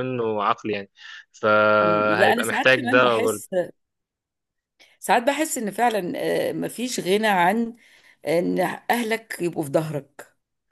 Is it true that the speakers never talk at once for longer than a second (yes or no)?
no